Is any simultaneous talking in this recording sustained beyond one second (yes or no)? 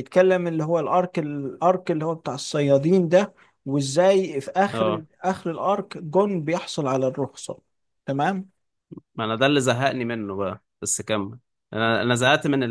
no